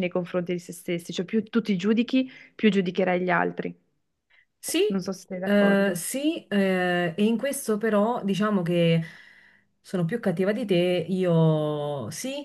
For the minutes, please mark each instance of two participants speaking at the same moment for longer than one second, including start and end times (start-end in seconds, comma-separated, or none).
none